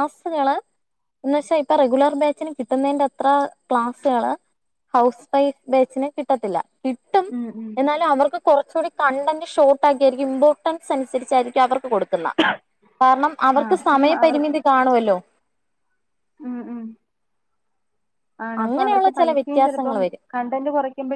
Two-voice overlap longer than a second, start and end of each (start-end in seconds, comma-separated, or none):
18.6-20.2